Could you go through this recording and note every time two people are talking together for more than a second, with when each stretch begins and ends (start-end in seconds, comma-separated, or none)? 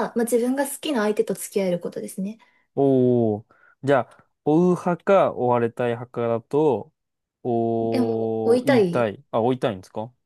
7.8-9.1